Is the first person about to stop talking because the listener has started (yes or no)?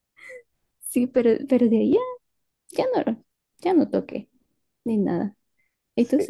yes